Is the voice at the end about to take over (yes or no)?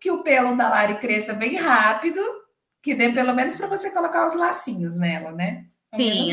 yes